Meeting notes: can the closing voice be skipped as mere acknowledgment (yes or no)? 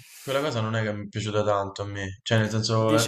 no